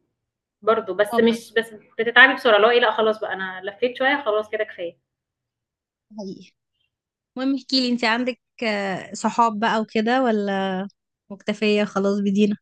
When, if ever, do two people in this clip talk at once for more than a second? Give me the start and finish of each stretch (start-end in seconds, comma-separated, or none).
none